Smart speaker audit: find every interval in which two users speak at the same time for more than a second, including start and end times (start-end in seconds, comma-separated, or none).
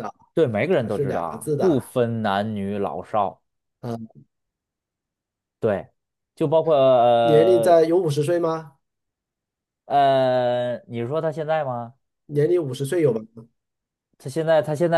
0.7-1.9